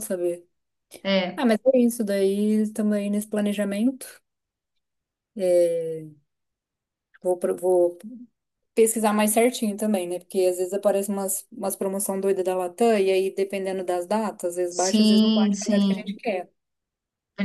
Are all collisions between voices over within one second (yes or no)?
no